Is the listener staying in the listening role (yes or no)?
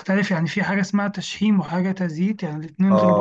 no